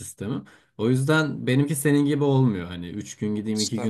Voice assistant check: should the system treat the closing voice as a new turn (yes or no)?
no